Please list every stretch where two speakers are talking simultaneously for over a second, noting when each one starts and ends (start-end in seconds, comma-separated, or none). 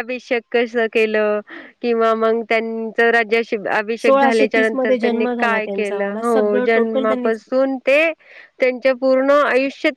4.0-7.4